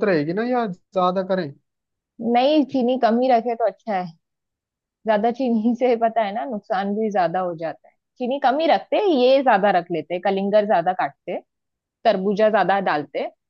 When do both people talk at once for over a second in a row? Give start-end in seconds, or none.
none